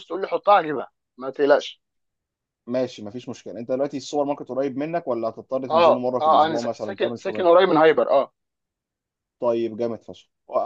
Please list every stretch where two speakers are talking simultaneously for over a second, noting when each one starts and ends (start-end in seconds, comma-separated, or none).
5.7-7.5